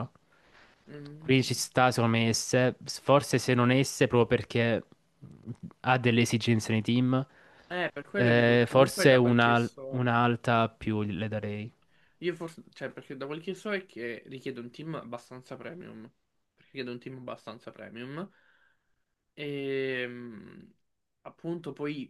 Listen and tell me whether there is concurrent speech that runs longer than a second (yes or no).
yes